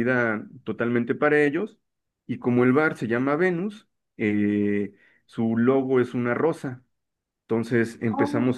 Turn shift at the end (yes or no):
no